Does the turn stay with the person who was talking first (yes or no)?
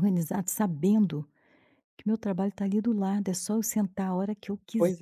no